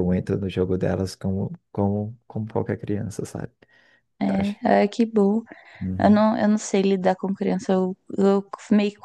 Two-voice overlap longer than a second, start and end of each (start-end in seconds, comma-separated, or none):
none